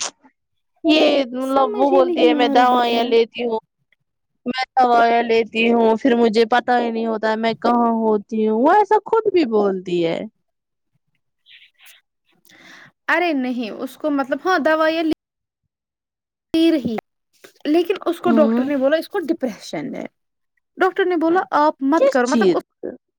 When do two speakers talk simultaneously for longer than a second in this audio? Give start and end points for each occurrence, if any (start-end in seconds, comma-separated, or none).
1.5-3.0